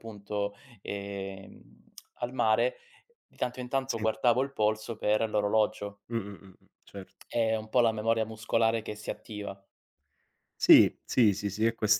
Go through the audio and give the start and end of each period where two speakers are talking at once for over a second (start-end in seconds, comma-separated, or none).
none